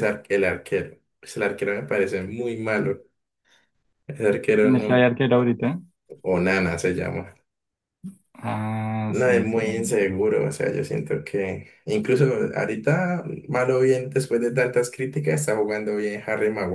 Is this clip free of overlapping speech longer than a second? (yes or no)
yes